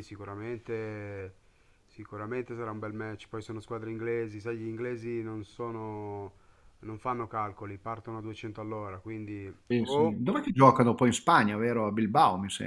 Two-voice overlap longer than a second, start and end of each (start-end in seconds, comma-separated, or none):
none